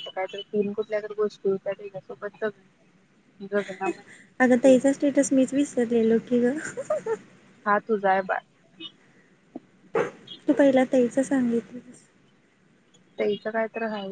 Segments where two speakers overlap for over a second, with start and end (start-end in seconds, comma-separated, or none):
none